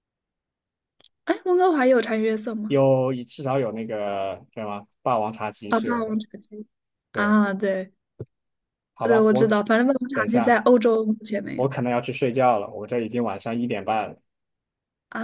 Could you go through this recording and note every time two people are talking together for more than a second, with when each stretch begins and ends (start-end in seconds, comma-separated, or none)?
none